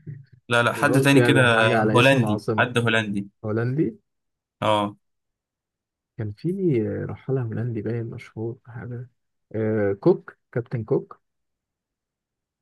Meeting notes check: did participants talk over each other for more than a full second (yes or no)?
yes